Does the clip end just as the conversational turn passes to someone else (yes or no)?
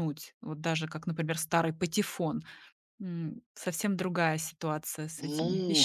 yes